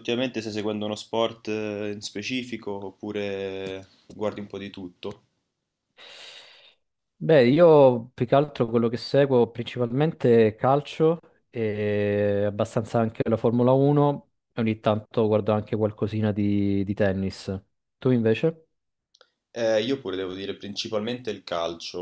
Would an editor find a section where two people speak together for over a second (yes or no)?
no